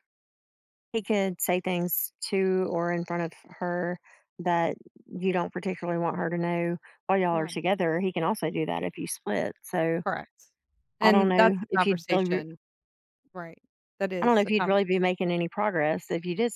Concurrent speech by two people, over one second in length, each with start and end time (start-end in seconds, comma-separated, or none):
11.0-12.4